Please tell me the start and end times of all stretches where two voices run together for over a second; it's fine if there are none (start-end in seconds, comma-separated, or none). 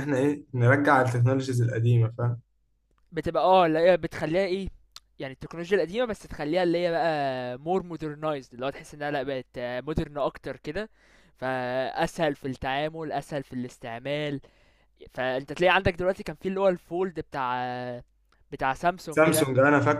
none